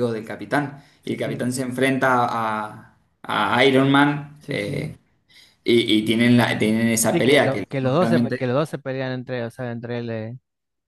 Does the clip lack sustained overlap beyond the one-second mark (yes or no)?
no